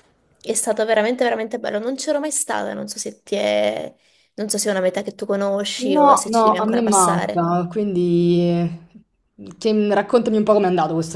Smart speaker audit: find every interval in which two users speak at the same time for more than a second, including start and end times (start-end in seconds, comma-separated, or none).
5.9-7.5